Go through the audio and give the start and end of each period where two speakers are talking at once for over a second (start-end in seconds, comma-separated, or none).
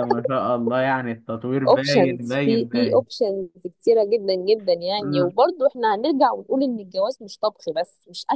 1.7-3.0